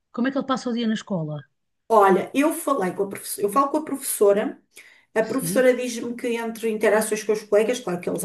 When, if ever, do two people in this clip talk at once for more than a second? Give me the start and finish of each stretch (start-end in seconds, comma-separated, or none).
none